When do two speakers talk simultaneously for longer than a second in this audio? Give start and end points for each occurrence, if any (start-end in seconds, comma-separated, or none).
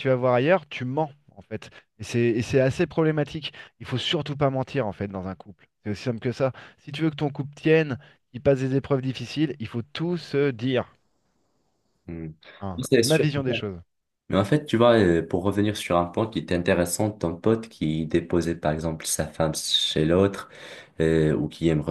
none